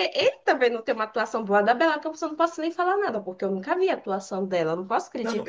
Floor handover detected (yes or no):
yes